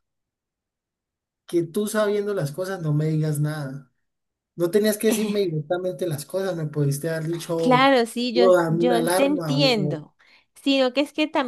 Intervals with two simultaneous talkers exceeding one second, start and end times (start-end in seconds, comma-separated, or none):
8.3-10.1